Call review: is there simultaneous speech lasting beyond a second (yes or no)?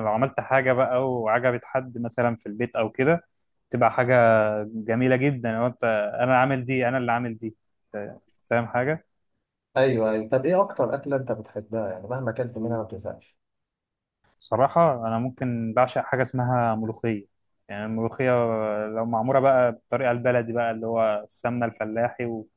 no